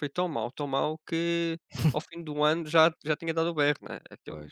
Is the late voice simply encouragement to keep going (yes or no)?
yes